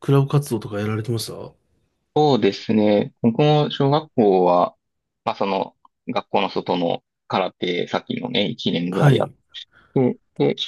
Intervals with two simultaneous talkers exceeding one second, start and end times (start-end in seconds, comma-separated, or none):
none